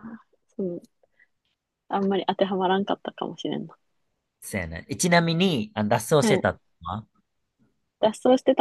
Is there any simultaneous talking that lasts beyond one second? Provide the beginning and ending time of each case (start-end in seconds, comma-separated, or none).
none